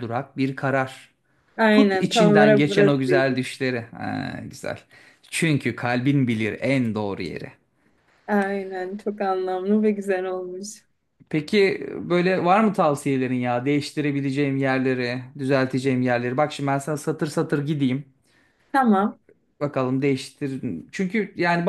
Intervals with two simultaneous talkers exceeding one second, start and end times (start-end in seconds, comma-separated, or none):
1.7-3.4